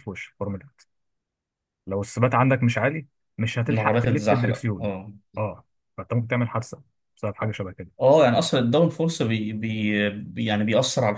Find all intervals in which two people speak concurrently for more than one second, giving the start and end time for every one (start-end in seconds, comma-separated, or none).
3.7-4.9